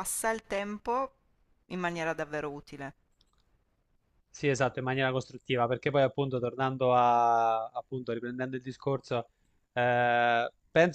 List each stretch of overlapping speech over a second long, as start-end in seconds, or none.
none